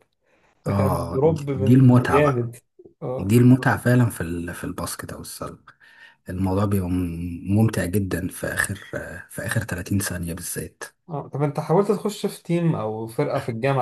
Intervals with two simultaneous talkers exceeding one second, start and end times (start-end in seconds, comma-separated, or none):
0.7-2.5